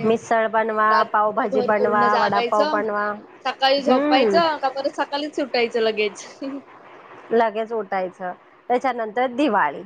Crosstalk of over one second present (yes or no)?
yes